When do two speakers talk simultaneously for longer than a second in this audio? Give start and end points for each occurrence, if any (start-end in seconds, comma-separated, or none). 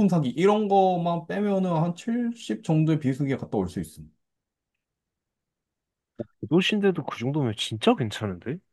none